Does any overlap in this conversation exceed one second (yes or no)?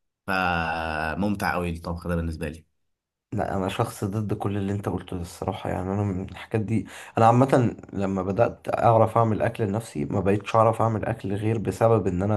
no